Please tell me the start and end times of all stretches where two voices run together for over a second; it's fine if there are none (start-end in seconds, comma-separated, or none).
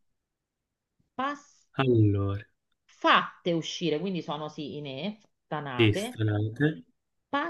none